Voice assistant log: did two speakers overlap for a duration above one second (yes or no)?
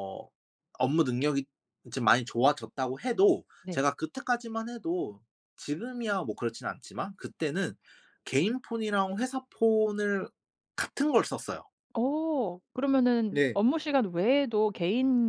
no